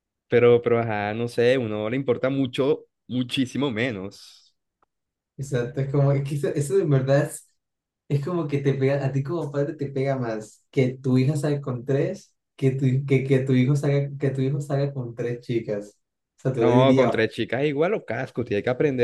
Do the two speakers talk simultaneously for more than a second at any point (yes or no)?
no